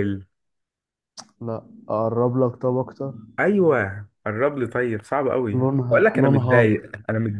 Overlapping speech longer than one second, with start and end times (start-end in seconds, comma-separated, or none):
5.5-6.8